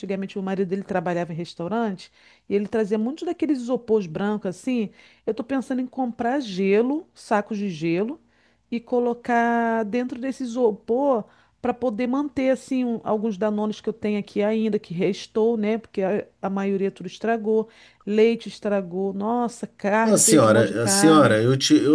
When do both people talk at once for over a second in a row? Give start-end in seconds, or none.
20.0-21.4